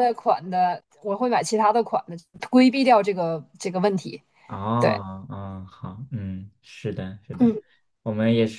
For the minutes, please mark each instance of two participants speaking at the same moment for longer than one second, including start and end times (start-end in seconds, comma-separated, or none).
none